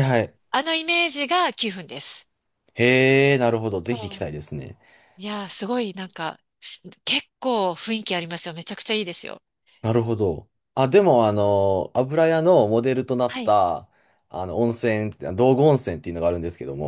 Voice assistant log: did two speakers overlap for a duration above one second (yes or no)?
no